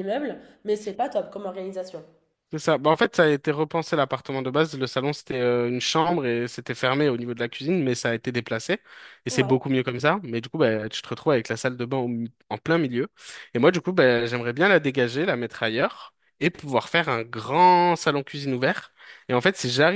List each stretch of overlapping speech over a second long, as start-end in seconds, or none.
none